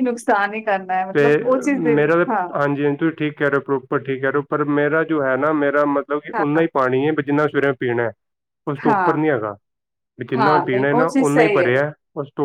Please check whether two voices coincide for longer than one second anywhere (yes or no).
yes